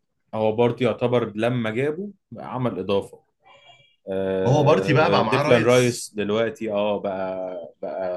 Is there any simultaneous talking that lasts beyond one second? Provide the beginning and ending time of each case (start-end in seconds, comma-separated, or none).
4.4-6.1